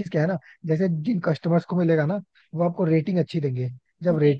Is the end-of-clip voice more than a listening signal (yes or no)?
no